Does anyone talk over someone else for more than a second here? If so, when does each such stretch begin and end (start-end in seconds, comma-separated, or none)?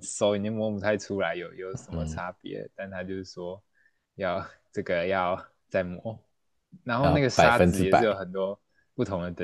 6.9-8.2